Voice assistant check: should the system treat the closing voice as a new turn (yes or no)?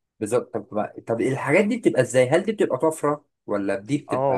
yes